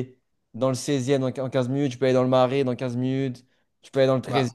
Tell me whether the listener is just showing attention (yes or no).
yes